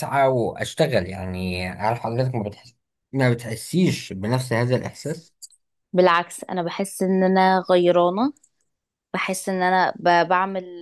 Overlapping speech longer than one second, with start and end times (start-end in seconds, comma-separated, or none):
none